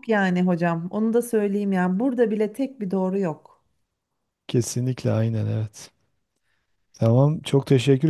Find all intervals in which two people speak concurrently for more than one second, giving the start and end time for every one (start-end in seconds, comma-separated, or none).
none